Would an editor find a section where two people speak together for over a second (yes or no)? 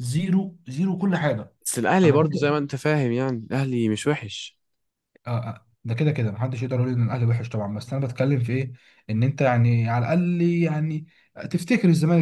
no